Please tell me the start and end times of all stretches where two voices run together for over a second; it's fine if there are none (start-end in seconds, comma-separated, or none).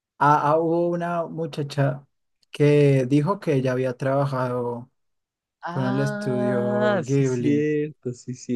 5.7-7.7